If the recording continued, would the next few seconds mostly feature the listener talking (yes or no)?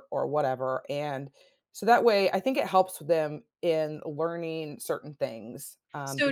yes